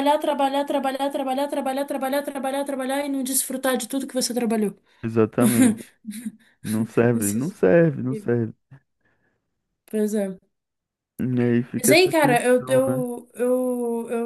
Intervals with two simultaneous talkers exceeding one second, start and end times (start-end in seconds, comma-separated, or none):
11.8-13.0